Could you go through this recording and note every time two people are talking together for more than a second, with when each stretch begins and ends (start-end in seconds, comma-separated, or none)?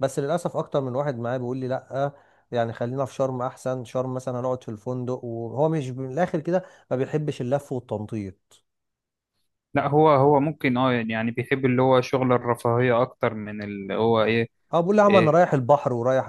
none